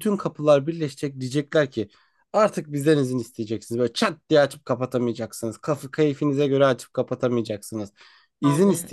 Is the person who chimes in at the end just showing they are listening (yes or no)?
yes